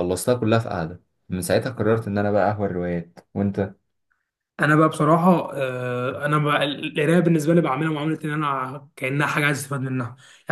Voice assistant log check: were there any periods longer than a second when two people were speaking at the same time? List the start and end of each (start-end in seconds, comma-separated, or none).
none